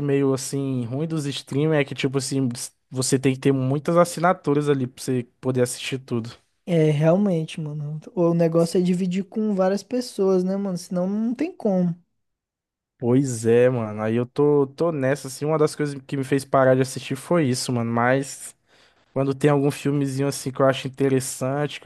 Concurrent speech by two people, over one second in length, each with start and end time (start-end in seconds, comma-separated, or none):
none